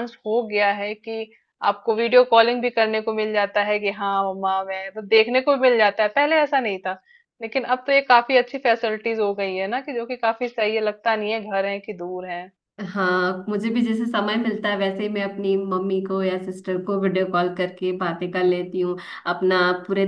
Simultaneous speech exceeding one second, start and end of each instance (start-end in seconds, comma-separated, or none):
none